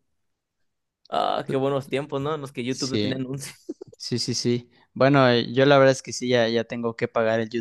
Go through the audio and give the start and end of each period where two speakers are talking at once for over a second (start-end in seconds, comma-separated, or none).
none